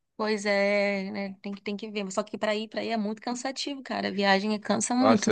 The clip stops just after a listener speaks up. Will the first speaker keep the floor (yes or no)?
no